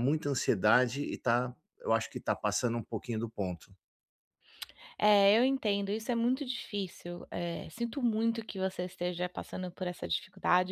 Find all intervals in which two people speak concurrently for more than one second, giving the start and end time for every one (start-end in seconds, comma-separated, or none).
none